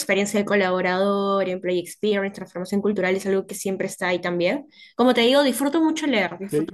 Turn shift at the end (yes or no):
yes